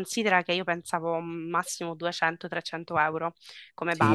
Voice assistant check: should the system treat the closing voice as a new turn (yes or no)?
yes